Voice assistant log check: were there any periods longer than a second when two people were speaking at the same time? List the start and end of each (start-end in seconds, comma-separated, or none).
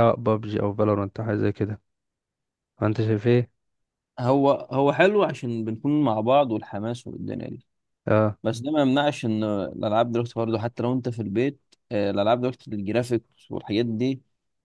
none